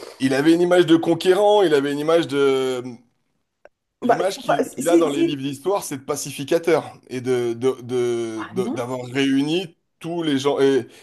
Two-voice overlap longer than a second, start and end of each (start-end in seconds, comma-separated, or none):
4.0-5.4